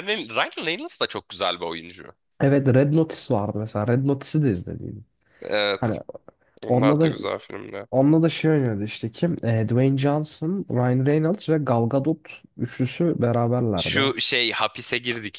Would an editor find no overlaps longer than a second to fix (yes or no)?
yes